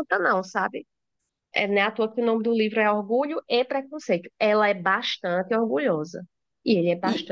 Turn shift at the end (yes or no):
no